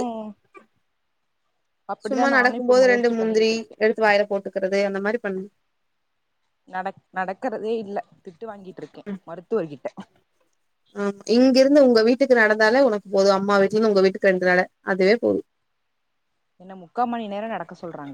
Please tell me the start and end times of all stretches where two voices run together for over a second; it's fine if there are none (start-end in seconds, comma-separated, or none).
2.0-3.8